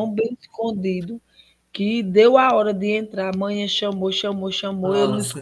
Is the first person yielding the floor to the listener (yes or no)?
no